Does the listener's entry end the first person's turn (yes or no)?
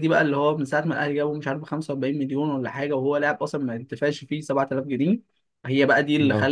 no